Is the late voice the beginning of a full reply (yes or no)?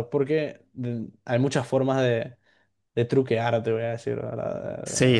yes